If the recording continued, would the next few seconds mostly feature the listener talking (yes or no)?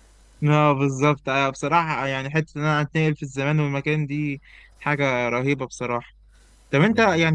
no